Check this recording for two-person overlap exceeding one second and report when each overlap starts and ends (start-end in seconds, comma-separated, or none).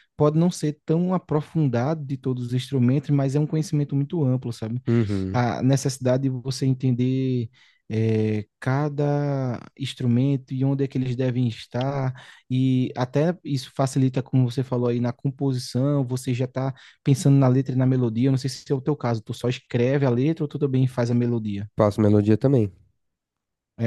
none